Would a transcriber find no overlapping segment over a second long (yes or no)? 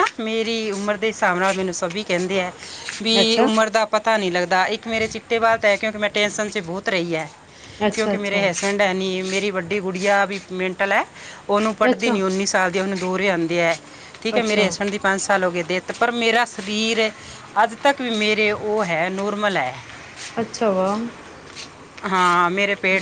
yes